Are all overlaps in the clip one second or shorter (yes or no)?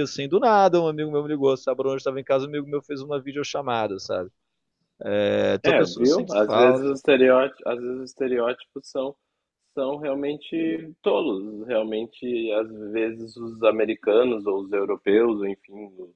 no